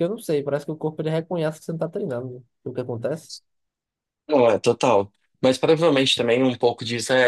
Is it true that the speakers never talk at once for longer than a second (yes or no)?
yes